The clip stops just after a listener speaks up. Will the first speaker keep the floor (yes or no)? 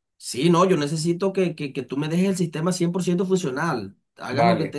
yes